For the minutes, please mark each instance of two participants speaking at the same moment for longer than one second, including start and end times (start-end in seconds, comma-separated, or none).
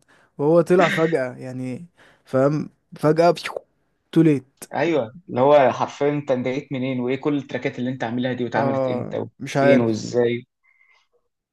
8.5-10.1